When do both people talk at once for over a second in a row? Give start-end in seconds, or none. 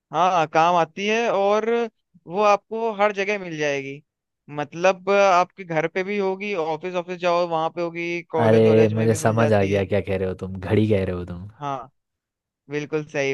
8.4-9.8